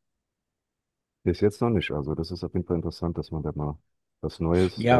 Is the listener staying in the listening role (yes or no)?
no